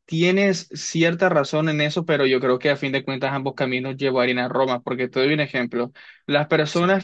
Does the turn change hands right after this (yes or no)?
no